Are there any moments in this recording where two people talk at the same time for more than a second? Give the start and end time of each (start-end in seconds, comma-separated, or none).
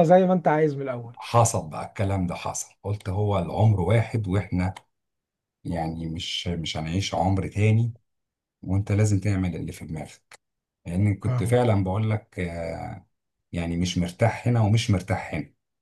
none